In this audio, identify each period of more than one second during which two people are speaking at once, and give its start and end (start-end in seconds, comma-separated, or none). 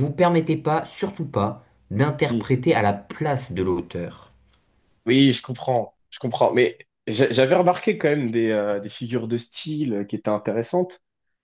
none